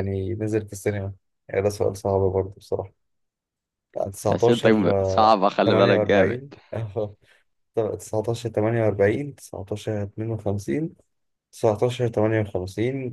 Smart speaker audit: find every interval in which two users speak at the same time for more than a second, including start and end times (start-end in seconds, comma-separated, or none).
4.3-6.4